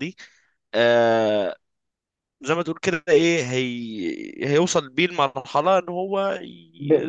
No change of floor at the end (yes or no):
no